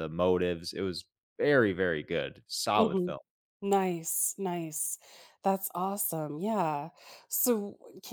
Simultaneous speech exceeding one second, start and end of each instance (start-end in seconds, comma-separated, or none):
none